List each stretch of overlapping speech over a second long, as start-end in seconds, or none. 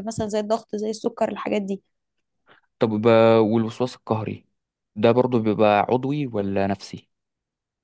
none